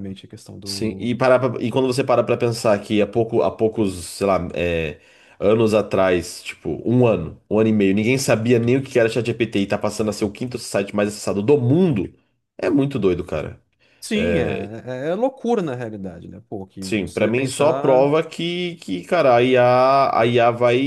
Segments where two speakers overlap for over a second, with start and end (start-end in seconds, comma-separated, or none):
16.8-18.1